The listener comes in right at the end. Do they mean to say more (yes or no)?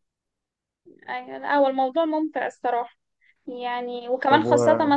no